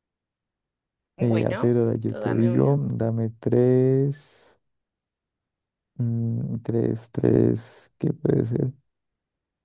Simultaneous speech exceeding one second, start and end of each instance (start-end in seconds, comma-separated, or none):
1.2-2.8